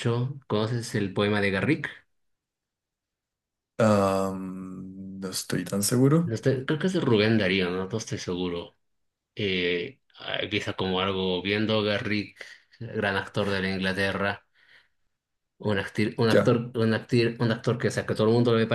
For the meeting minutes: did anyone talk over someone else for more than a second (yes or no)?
no